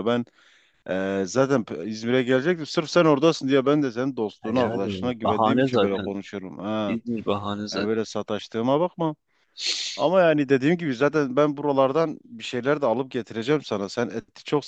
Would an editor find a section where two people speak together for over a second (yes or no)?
yes